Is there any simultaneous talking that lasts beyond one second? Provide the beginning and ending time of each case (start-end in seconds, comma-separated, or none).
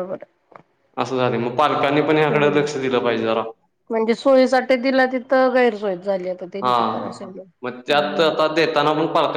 none